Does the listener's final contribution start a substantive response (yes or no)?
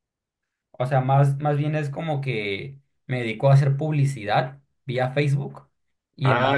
no